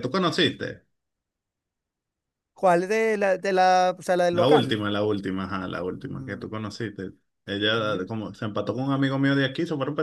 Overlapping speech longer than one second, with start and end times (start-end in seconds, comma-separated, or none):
none